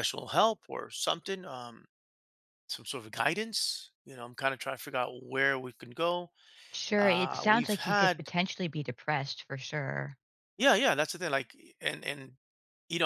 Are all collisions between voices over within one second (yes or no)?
no